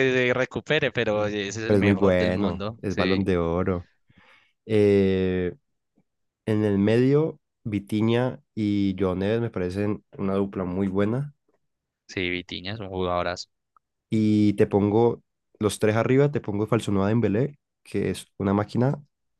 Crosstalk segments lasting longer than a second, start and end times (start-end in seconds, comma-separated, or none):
1.7-3.3